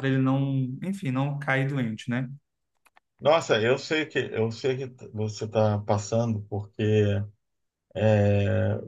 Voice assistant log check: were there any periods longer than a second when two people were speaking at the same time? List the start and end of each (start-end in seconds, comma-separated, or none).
none